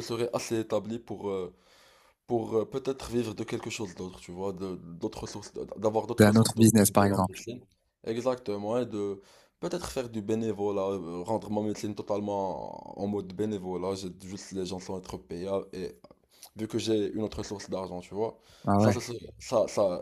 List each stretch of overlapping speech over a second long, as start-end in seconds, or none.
6.2-7.4